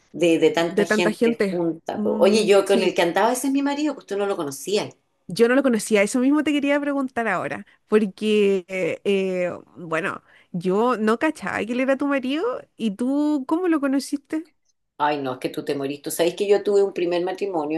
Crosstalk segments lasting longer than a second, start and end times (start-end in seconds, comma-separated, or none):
0.6-3.0